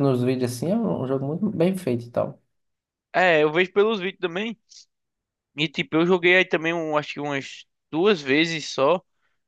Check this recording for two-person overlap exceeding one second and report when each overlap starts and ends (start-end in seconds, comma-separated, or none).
none